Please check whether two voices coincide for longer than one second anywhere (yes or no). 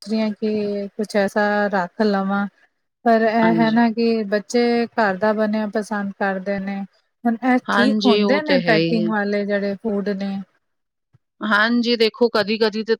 yes